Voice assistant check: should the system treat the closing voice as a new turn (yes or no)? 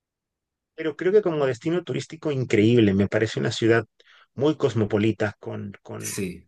no